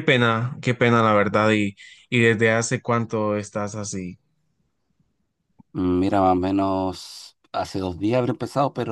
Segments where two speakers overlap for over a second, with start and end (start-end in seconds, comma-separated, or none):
none